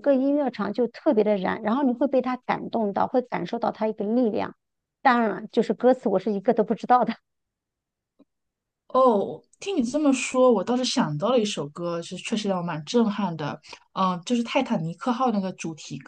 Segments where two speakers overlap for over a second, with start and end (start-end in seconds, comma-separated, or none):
none